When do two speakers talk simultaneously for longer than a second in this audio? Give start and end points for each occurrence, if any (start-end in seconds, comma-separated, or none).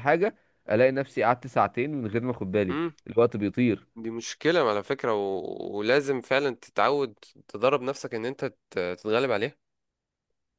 none